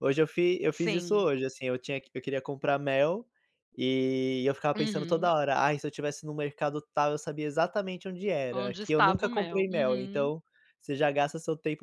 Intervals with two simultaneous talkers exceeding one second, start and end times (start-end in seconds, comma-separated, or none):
8.5-10.3